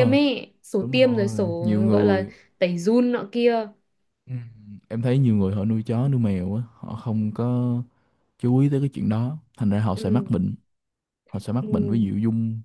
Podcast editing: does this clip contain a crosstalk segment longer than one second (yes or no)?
yes